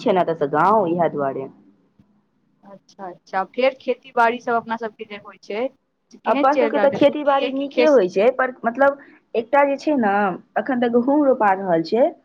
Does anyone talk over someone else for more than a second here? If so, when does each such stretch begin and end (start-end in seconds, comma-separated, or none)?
6.3-8.0